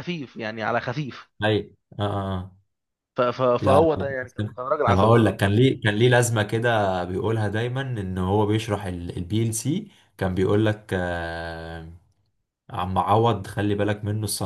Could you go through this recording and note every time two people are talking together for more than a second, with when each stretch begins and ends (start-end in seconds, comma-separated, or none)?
3.6-5.4